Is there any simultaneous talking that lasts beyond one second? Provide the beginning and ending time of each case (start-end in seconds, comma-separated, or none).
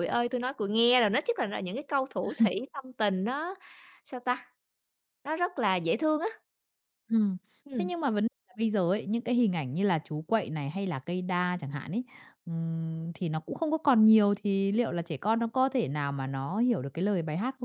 none